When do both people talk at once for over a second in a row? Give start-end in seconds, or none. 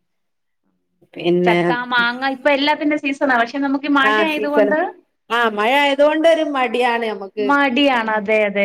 none